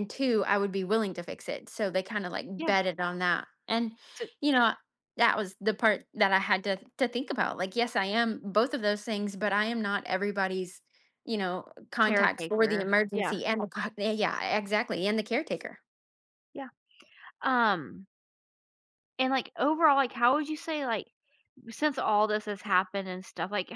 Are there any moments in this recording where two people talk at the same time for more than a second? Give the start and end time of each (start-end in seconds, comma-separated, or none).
12.0-13.3